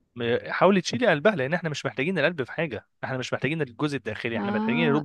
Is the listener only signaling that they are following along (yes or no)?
no